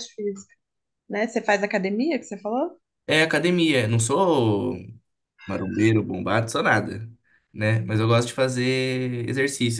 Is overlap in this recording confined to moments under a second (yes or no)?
yes